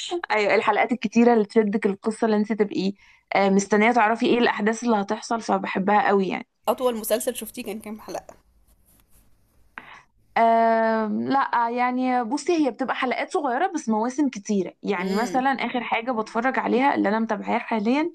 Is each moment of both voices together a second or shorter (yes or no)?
yes